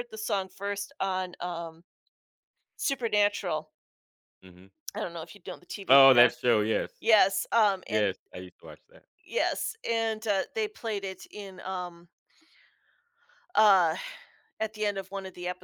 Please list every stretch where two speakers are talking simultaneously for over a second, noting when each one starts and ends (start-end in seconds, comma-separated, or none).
none